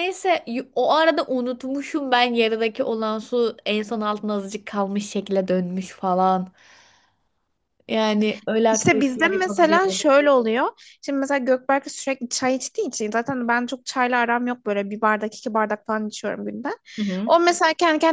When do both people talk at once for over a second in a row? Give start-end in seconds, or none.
8.7-10.0